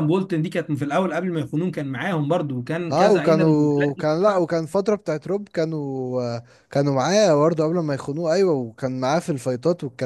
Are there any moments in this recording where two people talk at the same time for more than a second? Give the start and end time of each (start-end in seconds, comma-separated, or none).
2.9-4.5